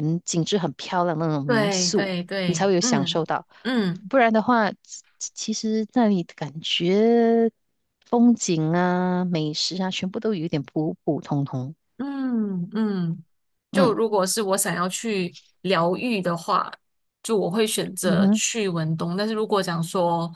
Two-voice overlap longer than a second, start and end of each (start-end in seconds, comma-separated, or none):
1.4-3.2